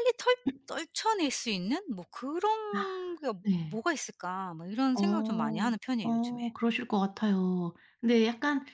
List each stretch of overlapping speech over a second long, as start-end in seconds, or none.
4.9-6.4